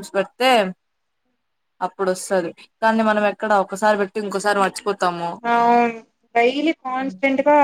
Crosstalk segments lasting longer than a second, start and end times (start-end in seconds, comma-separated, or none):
none